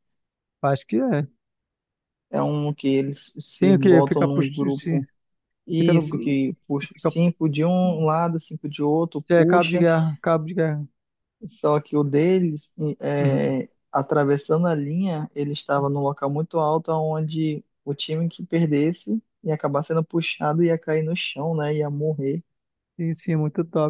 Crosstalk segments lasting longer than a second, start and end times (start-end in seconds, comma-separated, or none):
3.6-5.0